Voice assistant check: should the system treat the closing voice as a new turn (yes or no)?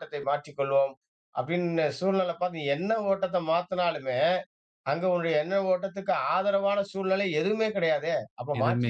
no